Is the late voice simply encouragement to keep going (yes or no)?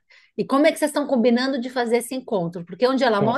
no